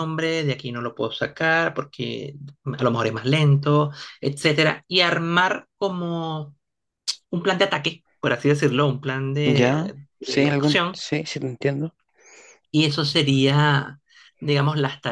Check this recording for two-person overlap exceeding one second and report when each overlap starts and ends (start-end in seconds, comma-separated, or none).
9.4-11.0